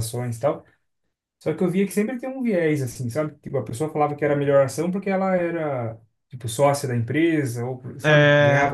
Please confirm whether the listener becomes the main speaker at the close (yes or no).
yes